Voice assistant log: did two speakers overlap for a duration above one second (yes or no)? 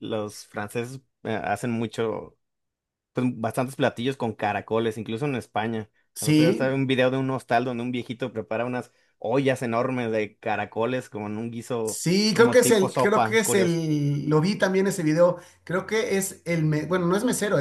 yes